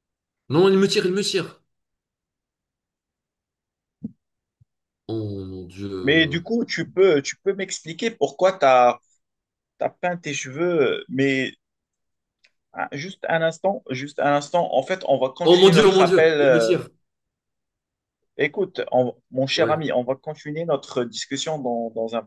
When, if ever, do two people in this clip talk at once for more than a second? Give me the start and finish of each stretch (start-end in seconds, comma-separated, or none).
15.4-16.8